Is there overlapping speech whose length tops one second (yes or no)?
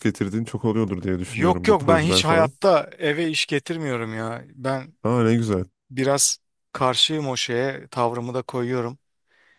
yes